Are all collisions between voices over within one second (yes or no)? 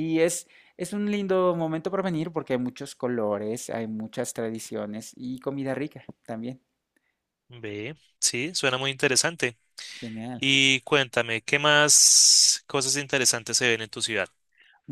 yes